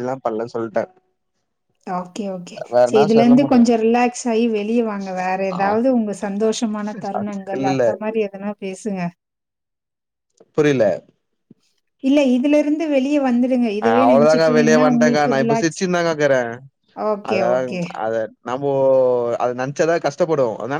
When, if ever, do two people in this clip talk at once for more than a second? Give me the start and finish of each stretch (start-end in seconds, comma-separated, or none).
13.8-15.8